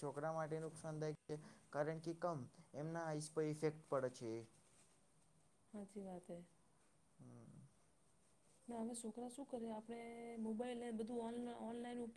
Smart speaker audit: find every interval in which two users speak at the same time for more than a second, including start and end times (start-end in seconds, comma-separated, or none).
none